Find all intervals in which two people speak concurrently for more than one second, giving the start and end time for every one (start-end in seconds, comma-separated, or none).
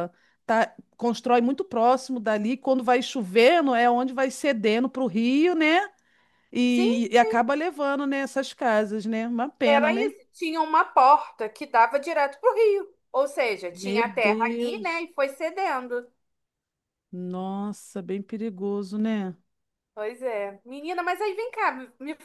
13.7-15.1